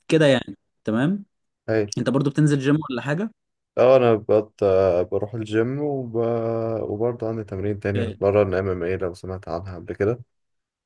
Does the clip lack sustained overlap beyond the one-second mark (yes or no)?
yes